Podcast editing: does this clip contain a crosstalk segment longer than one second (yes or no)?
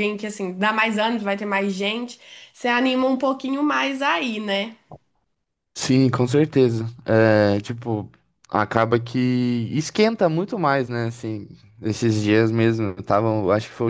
no